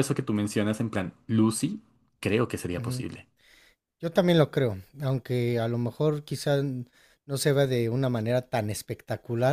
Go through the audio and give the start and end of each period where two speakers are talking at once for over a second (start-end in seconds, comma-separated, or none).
none